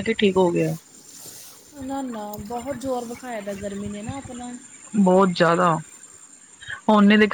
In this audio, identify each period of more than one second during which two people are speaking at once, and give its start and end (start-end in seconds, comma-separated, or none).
none